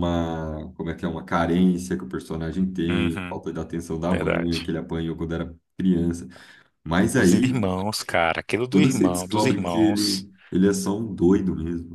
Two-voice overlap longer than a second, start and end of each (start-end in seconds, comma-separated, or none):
8.7-10.3